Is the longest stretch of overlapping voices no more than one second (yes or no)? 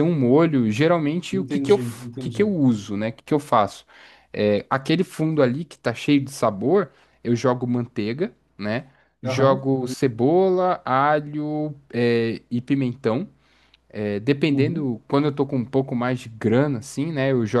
no